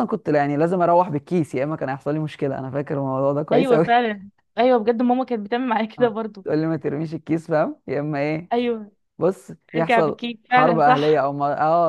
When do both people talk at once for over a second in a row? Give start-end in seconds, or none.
9.8-11.3